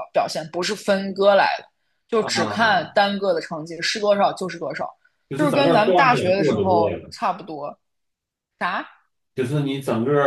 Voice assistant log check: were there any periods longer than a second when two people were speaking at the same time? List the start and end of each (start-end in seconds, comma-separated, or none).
5.3-7.1